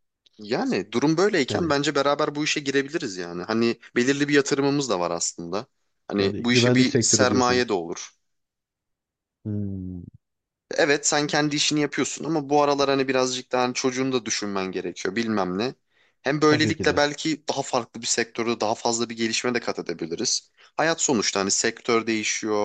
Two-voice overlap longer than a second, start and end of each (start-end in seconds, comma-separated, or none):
6.2-7.7